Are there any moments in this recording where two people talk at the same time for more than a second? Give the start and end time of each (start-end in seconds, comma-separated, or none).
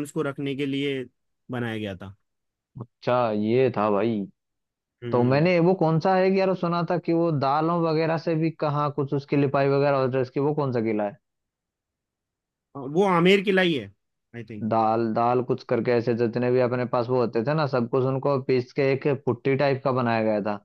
none